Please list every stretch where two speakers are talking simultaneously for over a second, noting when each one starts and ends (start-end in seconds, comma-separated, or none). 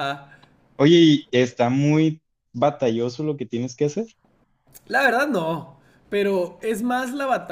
none